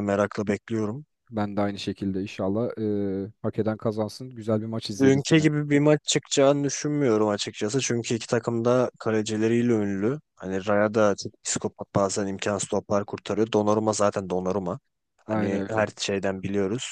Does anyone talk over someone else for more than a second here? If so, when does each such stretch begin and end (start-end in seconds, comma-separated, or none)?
none